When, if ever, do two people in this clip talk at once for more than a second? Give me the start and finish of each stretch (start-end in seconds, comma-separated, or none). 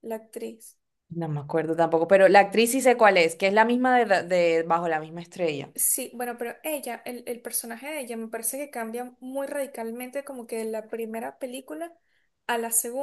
none